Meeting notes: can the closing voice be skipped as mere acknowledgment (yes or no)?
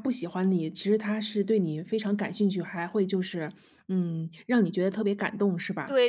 no